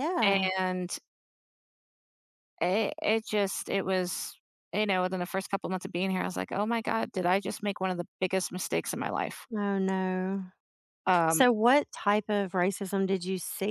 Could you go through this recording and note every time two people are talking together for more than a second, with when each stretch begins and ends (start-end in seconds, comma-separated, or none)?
none